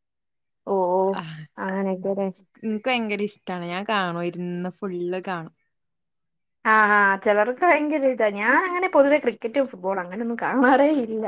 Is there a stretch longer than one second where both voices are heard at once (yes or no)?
no